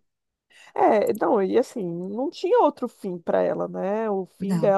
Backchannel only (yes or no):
yes